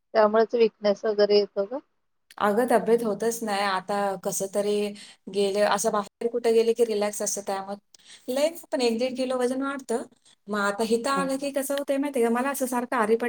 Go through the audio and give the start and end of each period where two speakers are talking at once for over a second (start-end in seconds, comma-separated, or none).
none